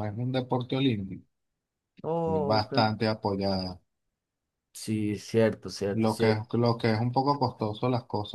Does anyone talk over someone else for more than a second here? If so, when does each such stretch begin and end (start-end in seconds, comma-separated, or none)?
none